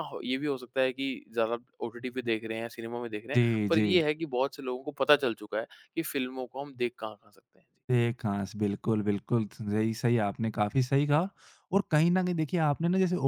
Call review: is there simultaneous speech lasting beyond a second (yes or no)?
no